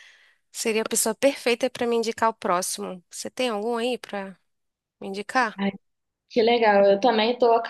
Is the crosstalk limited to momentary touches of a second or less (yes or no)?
yes